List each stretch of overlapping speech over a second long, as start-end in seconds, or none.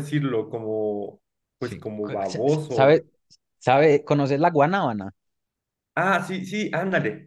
1.6-3.0